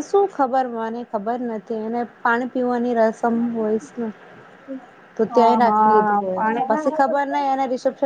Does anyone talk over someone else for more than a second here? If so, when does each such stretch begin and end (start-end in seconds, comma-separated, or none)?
5.3-6.9